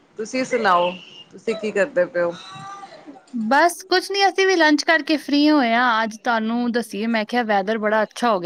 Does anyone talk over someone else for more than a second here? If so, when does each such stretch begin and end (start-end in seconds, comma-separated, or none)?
none